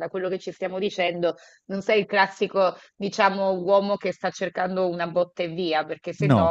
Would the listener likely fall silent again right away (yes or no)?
yes